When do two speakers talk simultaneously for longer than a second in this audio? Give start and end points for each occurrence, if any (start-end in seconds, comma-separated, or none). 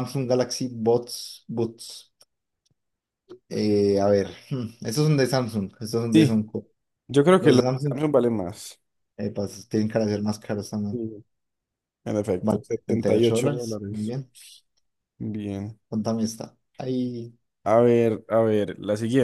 12.4-14.1